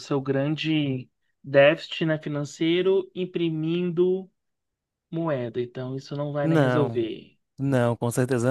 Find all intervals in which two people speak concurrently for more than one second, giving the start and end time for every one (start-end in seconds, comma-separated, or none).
none